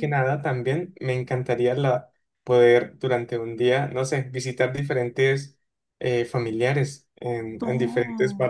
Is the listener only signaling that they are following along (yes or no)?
no